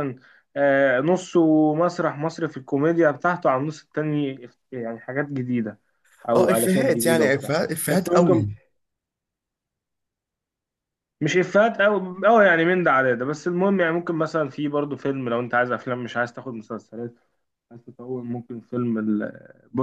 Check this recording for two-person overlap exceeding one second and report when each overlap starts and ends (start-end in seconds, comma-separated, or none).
6.3-8.5